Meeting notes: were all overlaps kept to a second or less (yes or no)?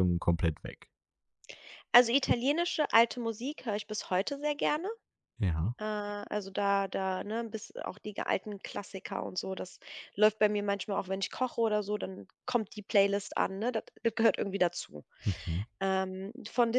yes